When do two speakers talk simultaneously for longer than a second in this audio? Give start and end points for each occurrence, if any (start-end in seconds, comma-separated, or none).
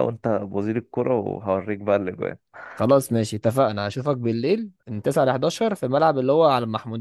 none